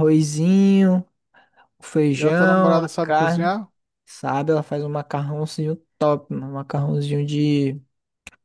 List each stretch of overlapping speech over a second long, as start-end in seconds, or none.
2.2-3.5